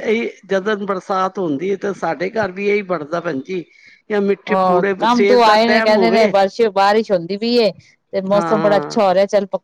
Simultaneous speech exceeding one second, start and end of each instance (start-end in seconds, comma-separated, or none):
4.5-6.3